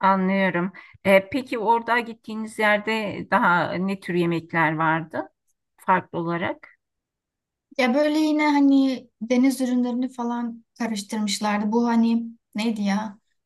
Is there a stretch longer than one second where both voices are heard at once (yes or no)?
no